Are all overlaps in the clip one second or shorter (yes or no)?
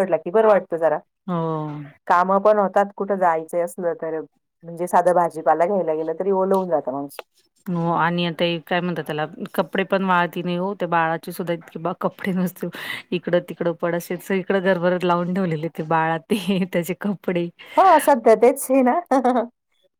yes